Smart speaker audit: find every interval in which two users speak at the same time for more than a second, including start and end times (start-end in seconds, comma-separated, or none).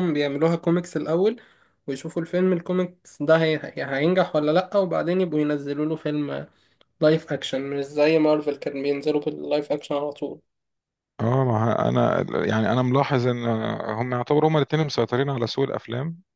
none